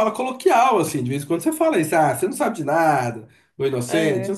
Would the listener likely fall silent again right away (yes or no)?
yes